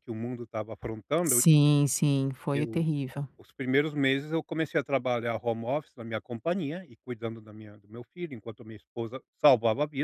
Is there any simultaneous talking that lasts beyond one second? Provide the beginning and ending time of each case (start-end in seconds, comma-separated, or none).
none